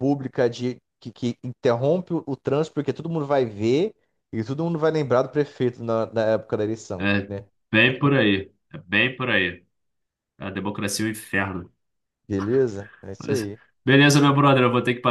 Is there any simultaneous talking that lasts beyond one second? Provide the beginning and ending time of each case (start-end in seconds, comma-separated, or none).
none